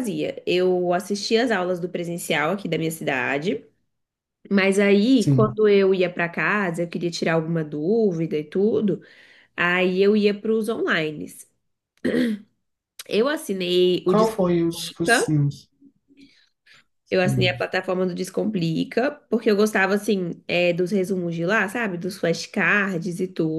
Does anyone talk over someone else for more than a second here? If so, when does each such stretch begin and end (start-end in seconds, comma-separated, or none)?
14.1-15.4